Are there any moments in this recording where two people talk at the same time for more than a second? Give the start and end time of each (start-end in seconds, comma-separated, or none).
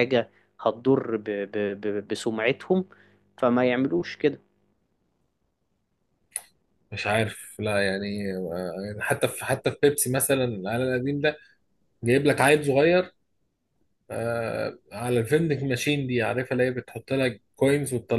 none